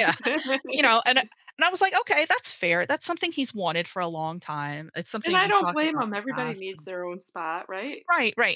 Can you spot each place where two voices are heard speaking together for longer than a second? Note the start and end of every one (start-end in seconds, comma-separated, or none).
5.2-6.9